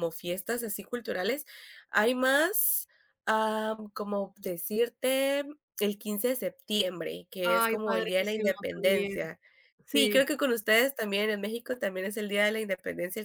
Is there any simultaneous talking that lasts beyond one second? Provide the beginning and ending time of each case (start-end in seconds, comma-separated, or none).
7.4-9.2